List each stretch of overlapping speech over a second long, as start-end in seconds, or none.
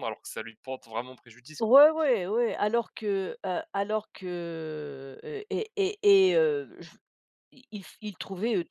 none